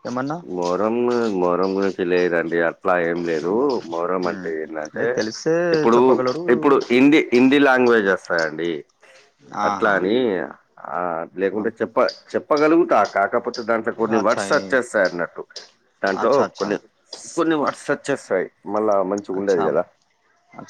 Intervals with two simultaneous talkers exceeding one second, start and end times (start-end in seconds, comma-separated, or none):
none